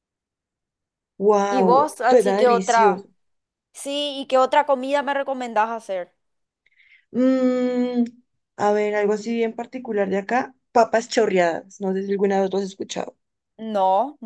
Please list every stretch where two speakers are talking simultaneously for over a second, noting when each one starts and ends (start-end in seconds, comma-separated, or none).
1.5-3.0